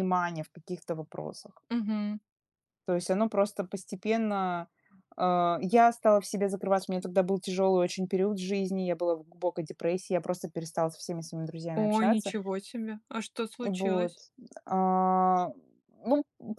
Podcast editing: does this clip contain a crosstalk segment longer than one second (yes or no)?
no